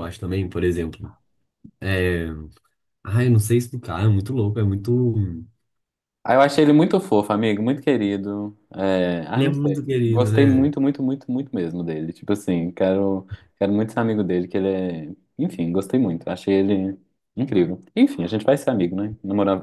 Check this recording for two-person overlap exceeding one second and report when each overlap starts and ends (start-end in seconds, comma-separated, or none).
9.3-10.6